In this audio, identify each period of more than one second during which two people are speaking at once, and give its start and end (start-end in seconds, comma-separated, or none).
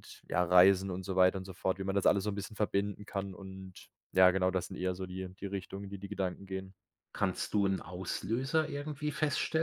none